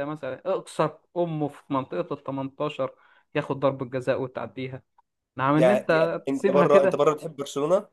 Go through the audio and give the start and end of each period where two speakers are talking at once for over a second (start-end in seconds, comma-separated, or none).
5.5-7.0